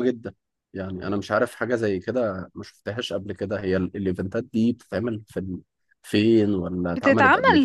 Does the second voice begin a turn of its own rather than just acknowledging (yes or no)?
yes